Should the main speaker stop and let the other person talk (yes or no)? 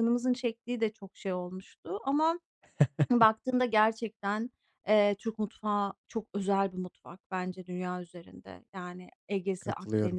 no